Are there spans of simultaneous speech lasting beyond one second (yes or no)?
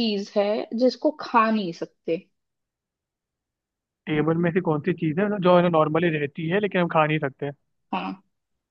no